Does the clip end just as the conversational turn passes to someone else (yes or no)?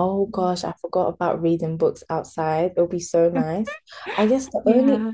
no